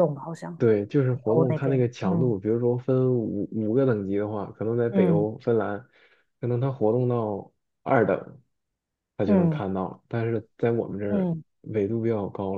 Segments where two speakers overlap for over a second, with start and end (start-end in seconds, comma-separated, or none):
1.1-2.4